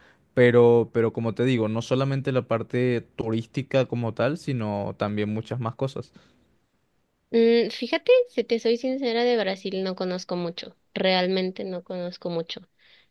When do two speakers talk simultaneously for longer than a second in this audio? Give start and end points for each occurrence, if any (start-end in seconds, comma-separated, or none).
none